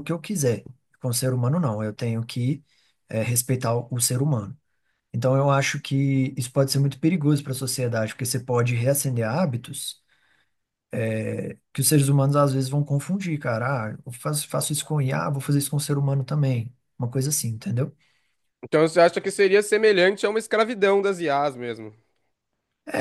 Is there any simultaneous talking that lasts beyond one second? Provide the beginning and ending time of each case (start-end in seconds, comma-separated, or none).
none